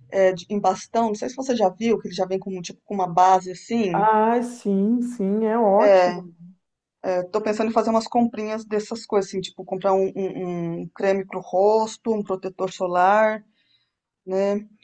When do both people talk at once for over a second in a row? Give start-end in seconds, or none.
none